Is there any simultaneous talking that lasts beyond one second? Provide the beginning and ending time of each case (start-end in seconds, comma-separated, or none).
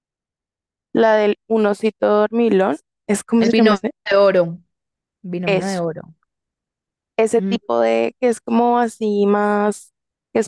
none